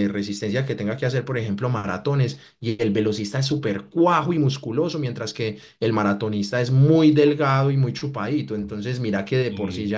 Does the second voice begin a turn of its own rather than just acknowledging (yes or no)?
no